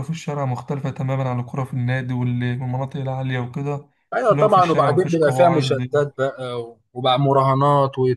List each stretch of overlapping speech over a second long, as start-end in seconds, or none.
4.3-5.8